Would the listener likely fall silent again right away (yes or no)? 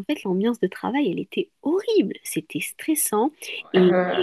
yes